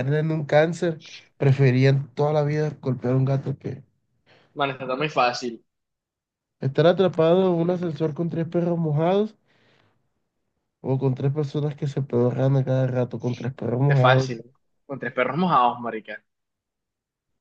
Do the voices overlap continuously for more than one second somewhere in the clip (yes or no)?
no